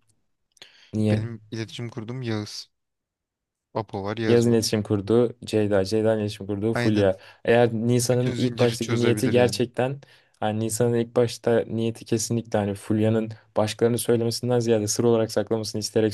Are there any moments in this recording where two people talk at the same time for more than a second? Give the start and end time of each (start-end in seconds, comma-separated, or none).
8.1-9.6